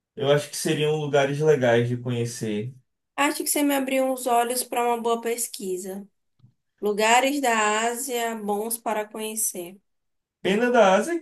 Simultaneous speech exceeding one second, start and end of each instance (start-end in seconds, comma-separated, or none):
none